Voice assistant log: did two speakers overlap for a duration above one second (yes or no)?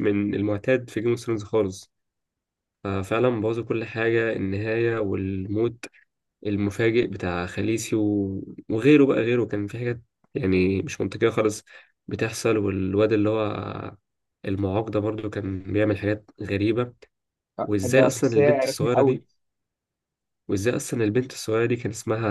yes